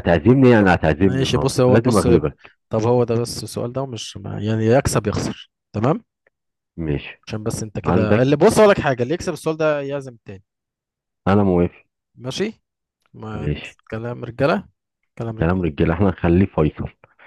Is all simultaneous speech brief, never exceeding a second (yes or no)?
no